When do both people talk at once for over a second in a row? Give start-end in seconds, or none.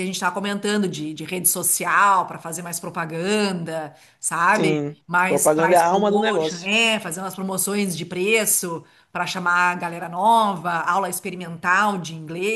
4.5-6.7